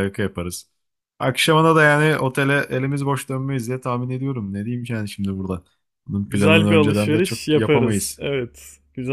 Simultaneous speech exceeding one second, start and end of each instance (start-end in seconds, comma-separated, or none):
6.2-8.2